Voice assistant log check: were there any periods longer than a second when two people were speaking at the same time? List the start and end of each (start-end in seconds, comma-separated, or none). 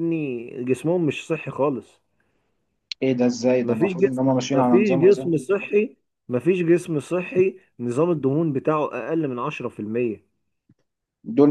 3.6-5.3